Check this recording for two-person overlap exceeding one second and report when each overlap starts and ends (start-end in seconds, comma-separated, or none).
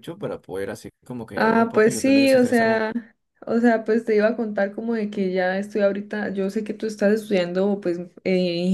1.4-2.8